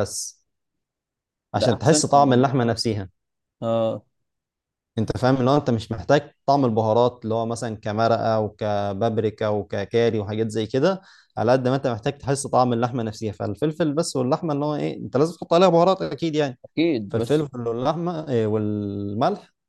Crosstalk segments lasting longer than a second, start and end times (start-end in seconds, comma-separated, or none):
1.6-2.8